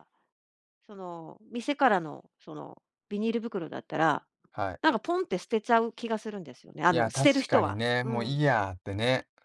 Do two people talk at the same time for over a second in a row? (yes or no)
yes